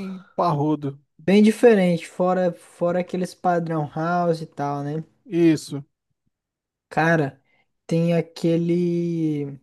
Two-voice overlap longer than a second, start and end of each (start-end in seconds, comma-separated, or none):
none